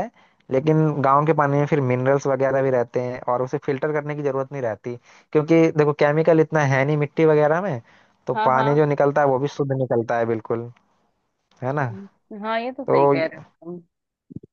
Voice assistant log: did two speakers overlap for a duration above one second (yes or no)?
no